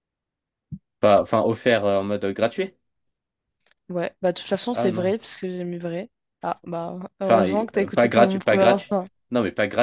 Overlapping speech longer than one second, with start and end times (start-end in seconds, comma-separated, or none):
7.2-8.9